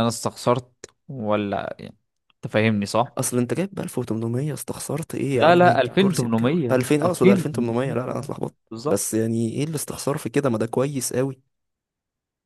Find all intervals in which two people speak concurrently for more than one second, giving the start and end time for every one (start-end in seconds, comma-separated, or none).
5.3-8.0